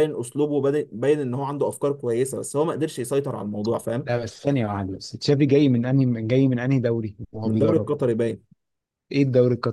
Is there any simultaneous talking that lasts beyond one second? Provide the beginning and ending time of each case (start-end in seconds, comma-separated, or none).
none